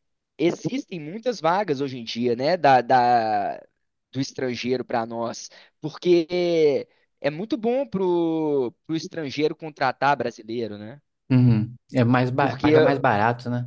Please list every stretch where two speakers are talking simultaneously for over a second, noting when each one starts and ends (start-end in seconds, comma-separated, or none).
none